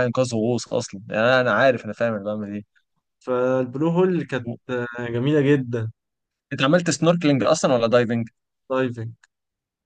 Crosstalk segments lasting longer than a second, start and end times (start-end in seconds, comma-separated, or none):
none